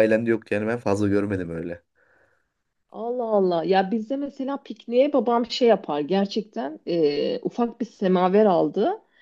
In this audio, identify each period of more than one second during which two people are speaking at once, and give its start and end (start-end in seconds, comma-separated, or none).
none